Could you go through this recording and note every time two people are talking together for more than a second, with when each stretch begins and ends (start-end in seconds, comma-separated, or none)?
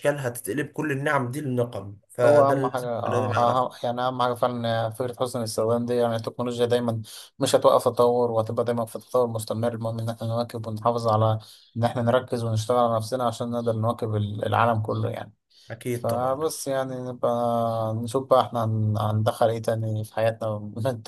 2.2-3.6